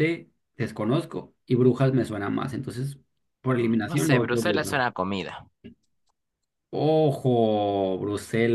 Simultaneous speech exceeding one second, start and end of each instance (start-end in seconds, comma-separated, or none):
3.5-4.8